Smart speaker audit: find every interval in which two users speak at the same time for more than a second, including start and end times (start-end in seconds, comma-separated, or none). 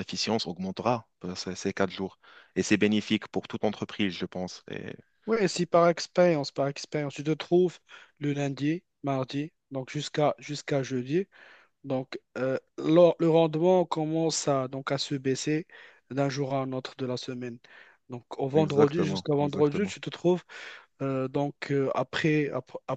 18.5-19.9